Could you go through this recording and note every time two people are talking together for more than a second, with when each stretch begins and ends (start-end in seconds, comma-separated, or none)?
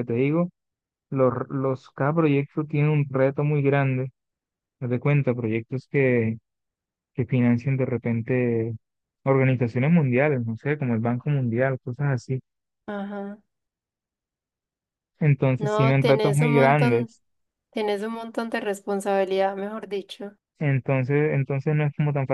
15.6-17.1